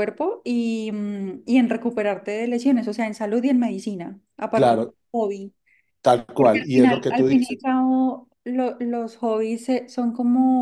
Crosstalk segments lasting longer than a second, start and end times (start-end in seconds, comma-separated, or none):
6.3-7.7